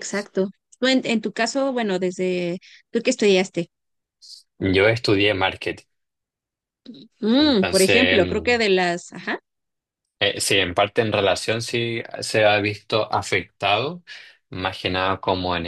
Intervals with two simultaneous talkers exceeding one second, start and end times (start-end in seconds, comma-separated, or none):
7.3-8.6